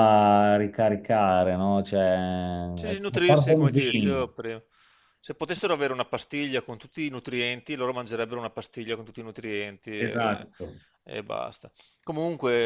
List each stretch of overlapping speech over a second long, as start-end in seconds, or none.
2.9-4.3